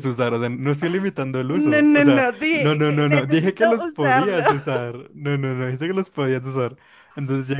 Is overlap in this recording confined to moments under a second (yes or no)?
no